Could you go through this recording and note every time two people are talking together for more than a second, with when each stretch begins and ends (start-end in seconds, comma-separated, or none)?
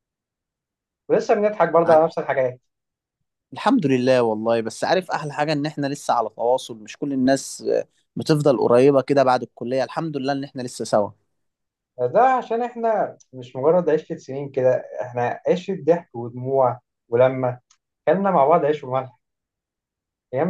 none